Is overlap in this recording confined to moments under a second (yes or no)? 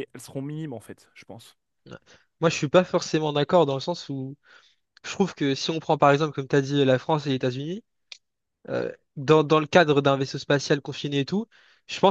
yes